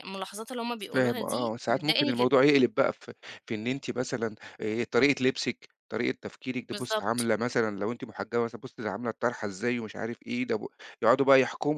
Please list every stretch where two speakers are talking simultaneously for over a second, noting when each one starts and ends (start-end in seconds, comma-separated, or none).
0.8-2.3